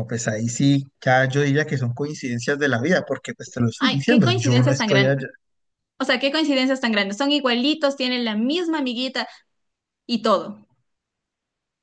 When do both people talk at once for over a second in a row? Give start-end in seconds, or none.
3.8-5.3